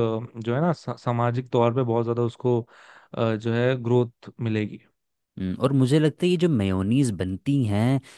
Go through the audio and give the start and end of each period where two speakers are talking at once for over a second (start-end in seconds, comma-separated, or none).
none